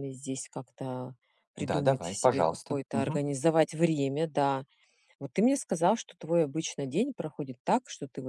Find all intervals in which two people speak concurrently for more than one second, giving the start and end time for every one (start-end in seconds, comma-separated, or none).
1.6-3.2